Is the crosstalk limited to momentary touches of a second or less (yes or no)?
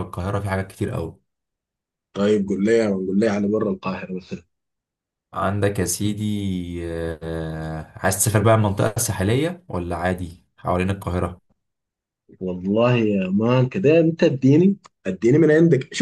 yes